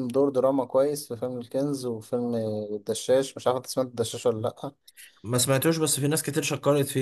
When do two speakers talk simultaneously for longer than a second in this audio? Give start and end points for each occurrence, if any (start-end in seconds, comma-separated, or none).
none